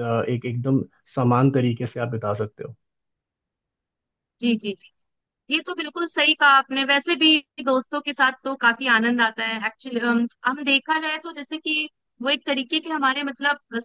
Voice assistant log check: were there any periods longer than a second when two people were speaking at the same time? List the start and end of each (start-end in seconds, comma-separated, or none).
none